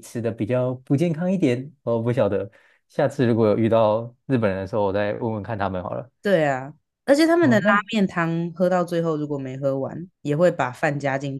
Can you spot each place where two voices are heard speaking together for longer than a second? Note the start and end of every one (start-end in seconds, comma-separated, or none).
none